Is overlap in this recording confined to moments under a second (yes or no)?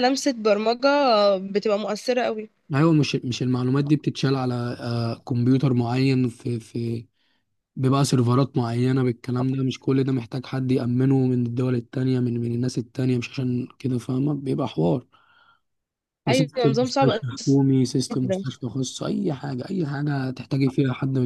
no